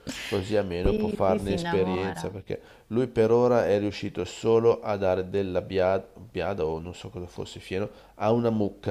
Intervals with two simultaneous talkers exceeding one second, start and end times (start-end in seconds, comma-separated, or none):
0.8-2.3